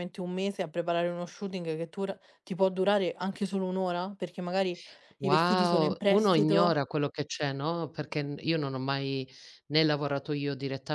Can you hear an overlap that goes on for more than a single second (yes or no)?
yes